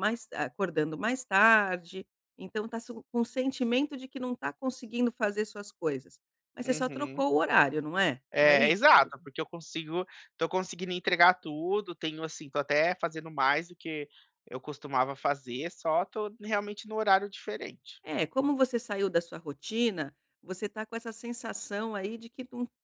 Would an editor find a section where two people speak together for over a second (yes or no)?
no